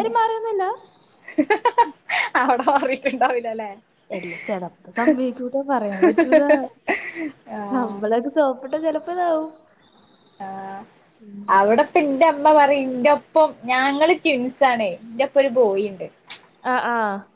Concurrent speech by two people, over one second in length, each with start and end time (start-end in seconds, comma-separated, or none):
none